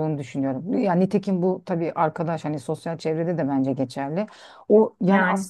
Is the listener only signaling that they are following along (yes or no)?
yes